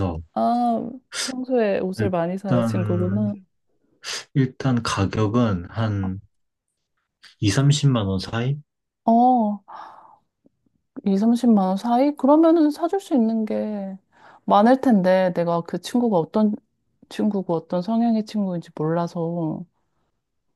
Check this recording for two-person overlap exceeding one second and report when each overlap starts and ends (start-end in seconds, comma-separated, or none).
2.0-3.3